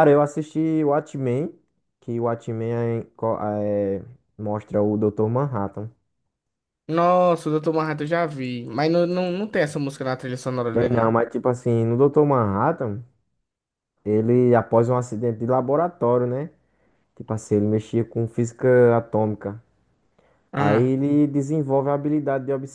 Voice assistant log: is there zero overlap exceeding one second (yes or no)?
yes